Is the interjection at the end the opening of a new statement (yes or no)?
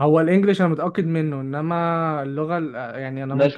yes